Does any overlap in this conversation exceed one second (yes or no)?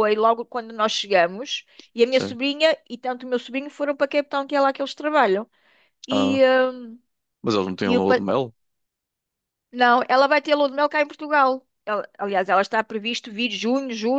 no